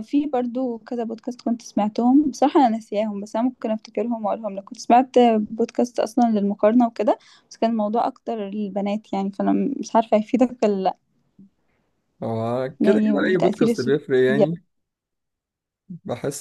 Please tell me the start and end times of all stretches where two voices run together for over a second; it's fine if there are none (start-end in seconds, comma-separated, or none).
12.8-14.4